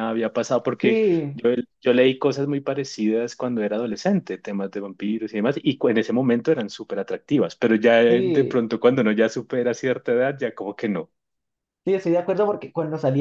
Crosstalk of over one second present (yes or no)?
no